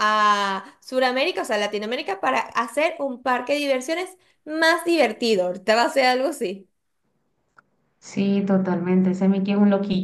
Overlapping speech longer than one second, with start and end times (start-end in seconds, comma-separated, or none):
none